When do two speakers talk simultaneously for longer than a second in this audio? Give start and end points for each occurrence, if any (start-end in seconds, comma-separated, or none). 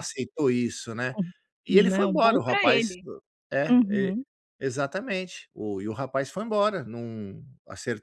1.7-2.9